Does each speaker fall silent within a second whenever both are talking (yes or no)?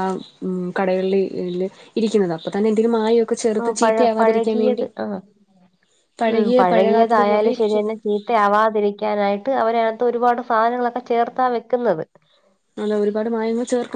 no